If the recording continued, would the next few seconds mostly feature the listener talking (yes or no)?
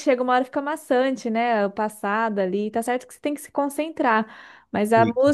no